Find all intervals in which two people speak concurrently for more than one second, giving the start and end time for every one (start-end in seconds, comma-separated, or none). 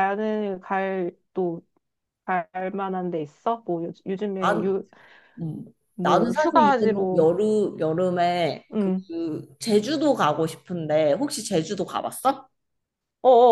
6.0-7.3